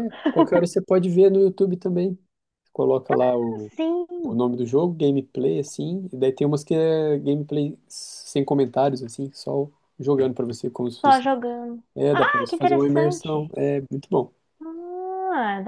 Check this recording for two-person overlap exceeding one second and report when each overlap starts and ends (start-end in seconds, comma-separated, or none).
11.9-13.5